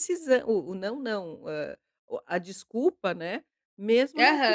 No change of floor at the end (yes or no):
no